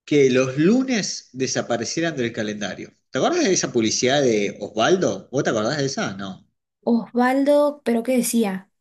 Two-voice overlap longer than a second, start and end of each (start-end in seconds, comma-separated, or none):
none